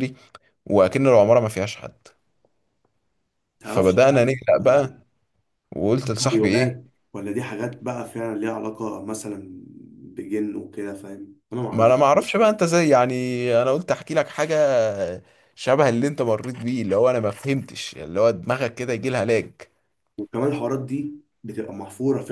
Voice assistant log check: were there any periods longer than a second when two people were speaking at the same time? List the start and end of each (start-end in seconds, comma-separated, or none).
3.6-4.9